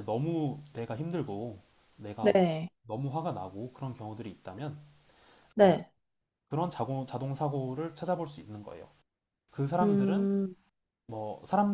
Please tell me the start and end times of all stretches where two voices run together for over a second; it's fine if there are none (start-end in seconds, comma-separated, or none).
none